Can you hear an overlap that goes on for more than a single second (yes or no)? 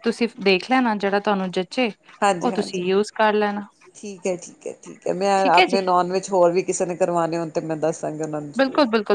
no